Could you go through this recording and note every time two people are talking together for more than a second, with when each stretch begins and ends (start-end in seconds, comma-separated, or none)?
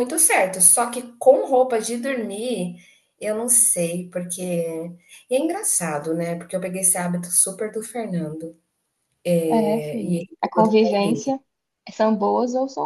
9.6-11.3